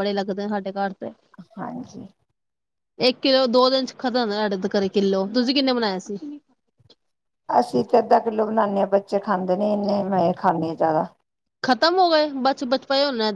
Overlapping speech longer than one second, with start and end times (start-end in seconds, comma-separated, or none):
none